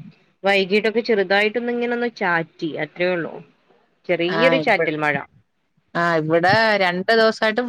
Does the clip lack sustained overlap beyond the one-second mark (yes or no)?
yes